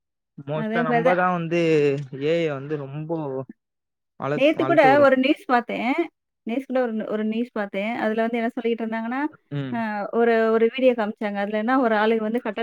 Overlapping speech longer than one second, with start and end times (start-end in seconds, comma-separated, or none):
none